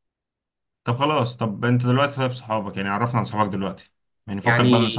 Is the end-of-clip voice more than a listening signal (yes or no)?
no